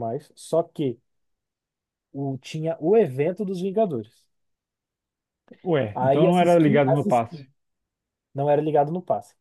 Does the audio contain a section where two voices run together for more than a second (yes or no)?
yes